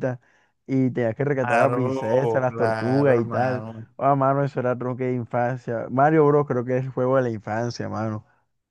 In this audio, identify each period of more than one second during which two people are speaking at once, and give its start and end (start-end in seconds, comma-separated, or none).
1.4-3.9